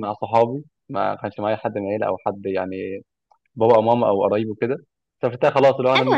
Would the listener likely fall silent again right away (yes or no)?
yes